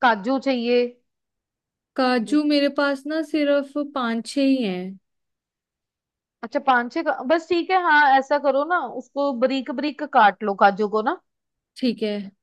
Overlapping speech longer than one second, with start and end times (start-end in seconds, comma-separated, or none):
none